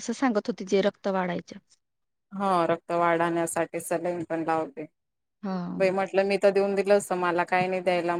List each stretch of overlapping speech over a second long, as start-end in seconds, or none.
none